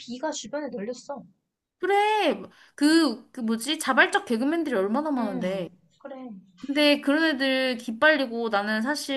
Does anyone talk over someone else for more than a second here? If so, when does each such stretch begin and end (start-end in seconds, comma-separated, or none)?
none